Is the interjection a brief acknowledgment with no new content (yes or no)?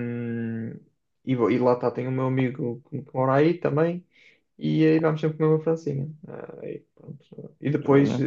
yes